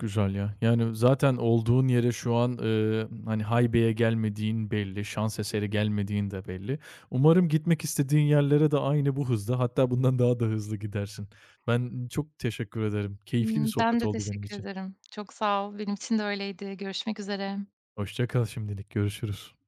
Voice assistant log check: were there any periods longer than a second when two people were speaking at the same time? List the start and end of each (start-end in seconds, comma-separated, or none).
13.4-14.7